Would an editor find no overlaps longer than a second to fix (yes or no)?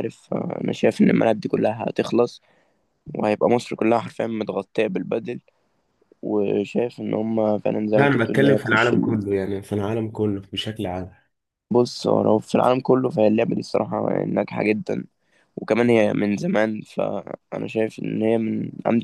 no